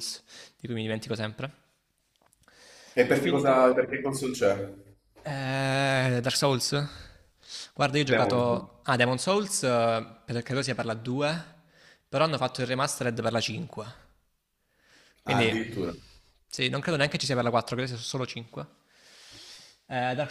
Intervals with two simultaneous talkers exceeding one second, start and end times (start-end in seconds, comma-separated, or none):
none